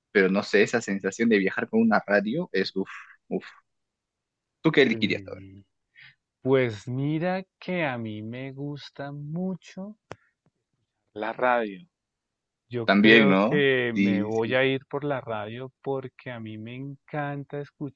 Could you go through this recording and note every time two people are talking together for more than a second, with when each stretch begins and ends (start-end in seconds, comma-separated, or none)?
12.8-14.6